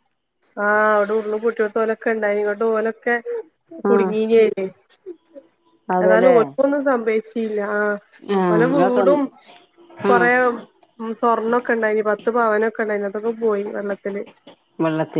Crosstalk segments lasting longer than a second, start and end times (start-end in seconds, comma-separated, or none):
none